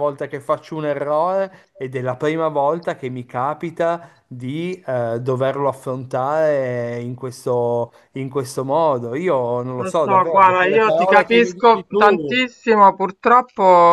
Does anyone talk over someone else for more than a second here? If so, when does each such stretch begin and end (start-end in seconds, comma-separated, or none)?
9.8-12.5